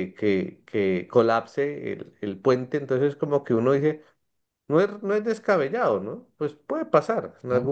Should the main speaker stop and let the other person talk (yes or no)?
no